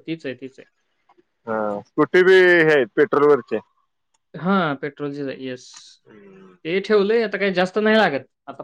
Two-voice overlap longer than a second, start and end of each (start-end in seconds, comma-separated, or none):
none